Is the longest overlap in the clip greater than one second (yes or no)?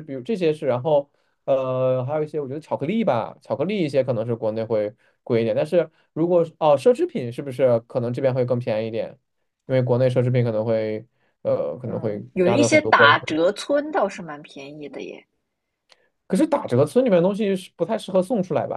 yes